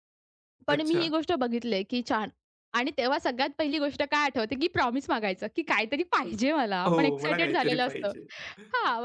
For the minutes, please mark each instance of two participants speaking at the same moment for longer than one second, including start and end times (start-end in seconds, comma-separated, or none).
6.9-8.1